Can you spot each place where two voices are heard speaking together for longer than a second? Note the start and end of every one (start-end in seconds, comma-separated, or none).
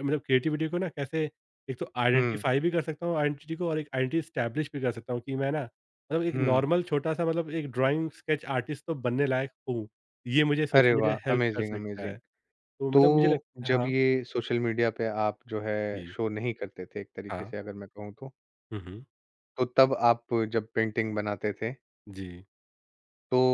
10.8-12.2